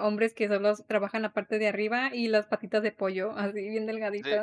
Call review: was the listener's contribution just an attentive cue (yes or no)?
no